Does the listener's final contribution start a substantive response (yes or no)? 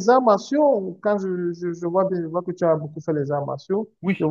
no